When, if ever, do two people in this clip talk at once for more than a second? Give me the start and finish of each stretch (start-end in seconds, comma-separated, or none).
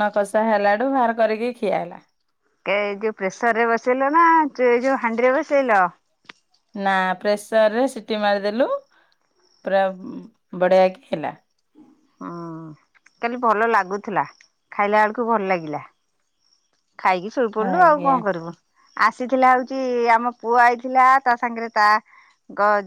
none